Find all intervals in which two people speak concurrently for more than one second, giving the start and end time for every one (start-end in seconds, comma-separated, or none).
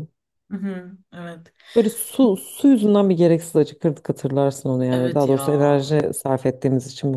none